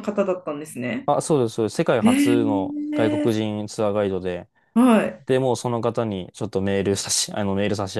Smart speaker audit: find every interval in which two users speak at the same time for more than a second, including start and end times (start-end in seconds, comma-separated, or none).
2.0-3.3